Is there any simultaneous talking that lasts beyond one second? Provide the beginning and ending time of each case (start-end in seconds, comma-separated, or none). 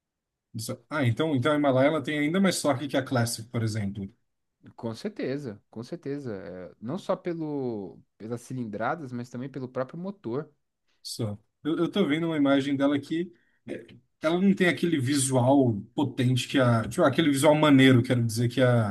none